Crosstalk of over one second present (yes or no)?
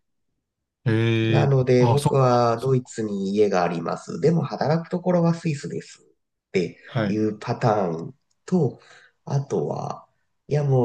yes